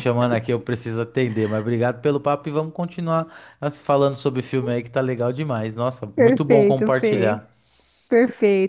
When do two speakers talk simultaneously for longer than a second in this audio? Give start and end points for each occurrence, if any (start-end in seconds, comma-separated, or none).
6.1-7.4